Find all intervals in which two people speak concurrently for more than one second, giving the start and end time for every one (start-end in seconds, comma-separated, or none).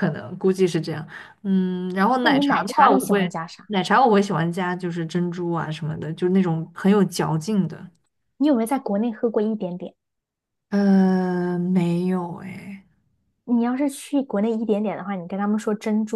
2.2-3.7